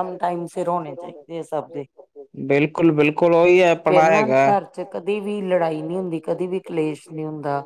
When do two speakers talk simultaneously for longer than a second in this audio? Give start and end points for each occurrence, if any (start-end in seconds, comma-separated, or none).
none